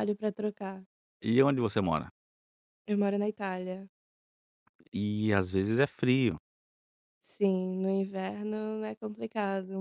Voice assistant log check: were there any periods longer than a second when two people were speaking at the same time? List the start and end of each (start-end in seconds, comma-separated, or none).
none